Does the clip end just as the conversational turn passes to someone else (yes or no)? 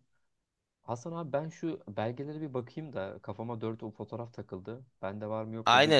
yes